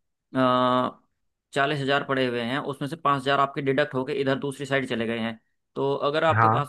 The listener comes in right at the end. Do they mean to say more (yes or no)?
no